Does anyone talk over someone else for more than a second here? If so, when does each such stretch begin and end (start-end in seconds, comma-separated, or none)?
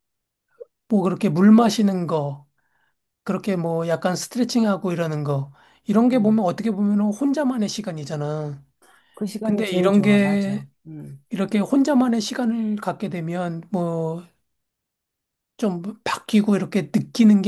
9.4-10.7